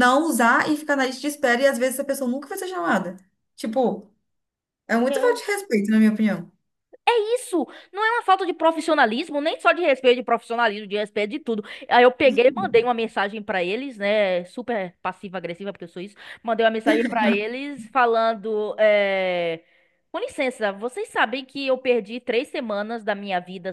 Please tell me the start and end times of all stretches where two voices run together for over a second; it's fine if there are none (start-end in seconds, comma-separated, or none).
none